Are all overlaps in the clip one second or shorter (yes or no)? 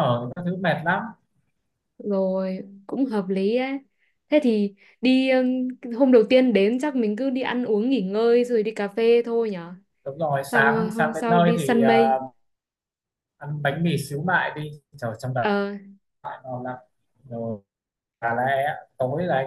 no